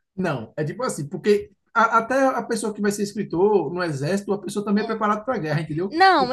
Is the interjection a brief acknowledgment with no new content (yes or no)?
no